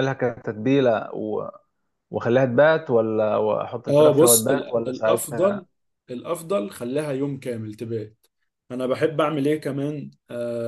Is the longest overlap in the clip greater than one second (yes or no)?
yes